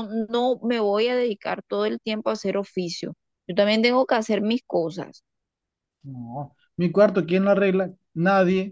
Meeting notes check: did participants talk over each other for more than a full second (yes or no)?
no